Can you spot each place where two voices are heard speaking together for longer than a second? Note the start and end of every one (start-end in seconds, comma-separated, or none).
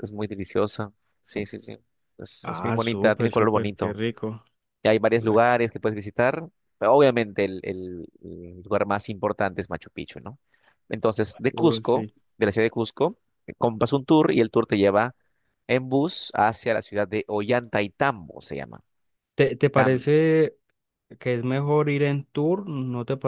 2.4-4.0